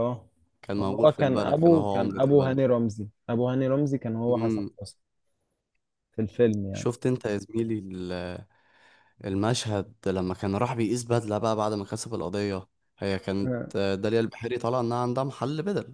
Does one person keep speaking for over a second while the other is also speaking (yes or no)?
yes